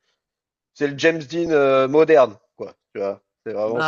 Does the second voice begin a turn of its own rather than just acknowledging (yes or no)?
no